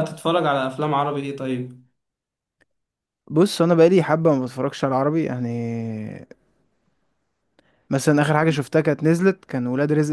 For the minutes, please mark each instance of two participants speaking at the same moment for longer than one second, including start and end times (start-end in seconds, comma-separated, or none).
none